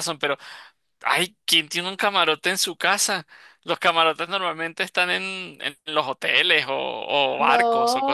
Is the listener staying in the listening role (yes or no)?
no